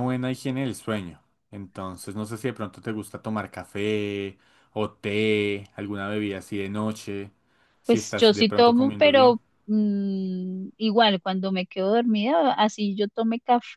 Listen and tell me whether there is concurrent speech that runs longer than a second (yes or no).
yes